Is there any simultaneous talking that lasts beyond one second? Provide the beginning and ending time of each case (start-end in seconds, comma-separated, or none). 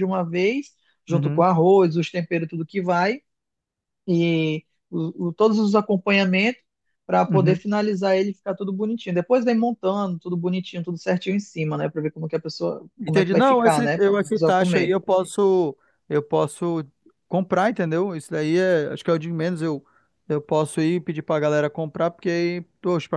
13.0-14.9